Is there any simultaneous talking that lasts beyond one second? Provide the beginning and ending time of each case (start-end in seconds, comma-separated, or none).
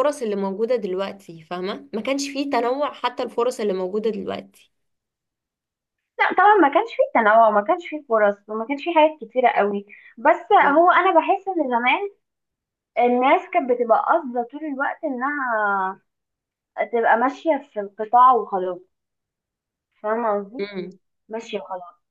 none